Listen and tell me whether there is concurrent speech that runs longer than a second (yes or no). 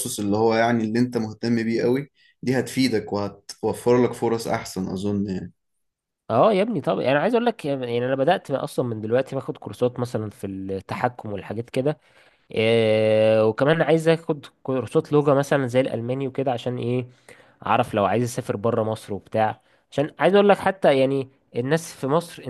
no